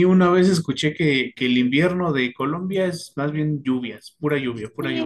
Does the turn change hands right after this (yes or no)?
yes